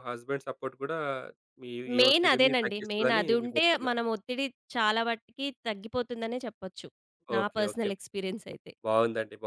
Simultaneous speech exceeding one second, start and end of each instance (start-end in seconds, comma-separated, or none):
2.0-4.0